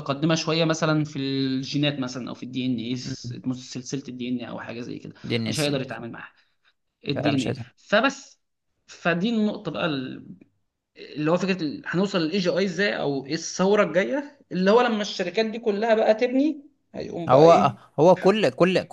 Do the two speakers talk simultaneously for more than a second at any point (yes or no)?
no